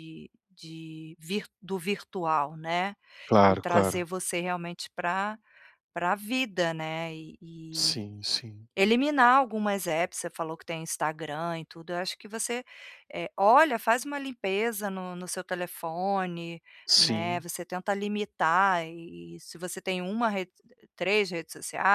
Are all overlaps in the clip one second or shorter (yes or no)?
yes